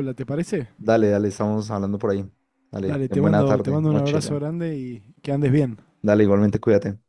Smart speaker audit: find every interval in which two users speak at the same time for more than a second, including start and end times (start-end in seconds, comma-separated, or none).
2.8-4.4